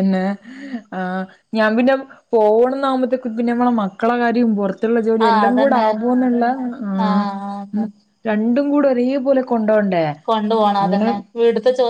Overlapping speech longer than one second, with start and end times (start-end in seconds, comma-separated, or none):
none